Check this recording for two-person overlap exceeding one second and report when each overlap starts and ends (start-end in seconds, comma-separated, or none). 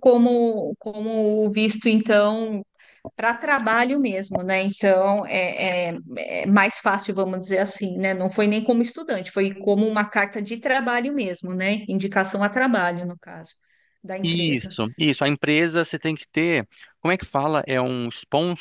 none